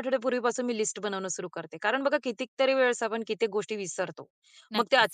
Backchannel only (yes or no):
yes